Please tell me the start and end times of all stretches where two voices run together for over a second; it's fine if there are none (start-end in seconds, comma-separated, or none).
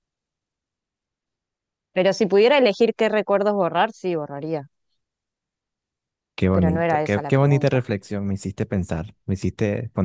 6.5-7.8